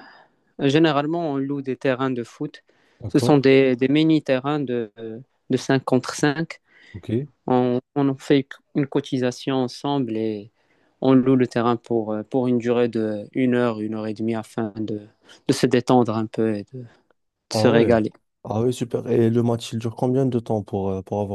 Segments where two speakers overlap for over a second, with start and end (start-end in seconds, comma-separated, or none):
none